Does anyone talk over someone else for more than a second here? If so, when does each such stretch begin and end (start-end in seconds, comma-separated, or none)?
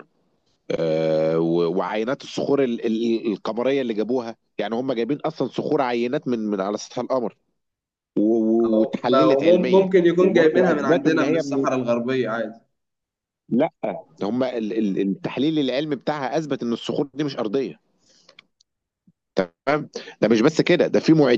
8.7-11.7